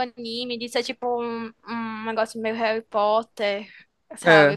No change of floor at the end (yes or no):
yes